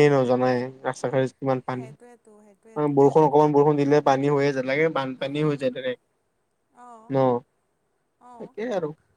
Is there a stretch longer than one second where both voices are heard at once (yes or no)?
yes